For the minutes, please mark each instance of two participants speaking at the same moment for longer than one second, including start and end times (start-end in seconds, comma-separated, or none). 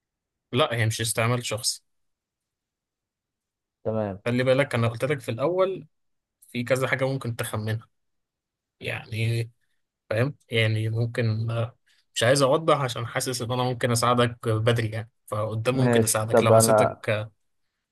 15.7-17.0